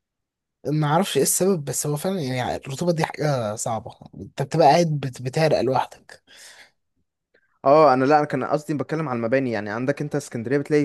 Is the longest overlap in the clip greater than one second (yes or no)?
no